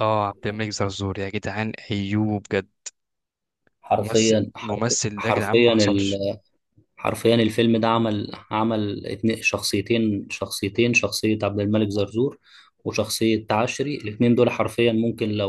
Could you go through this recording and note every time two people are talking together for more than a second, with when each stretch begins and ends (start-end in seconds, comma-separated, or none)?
4.0-5.8